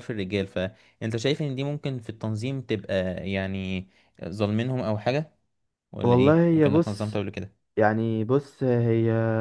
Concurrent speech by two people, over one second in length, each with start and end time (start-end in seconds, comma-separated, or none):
6.0-7.2